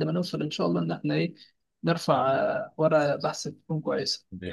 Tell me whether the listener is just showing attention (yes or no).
no